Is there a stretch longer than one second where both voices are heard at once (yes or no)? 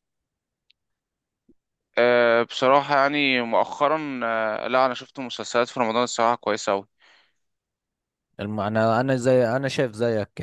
no